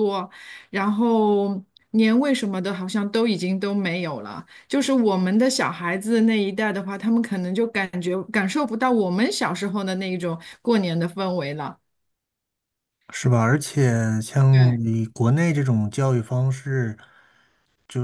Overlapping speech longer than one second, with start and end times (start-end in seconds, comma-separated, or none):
none